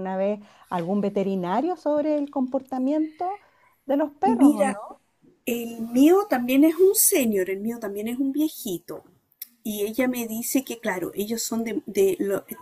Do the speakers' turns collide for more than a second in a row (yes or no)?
no